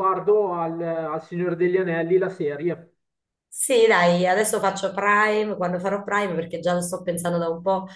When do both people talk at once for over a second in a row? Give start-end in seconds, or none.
none